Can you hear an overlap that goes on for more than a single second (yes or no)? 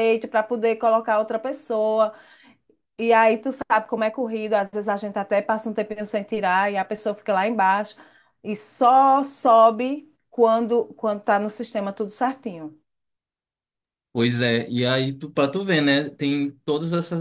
no